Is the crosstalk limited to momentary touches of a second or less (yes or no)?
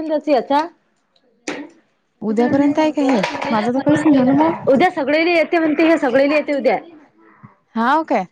no